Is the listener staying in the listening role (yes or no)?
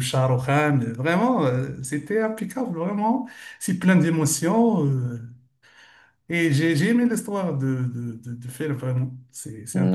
no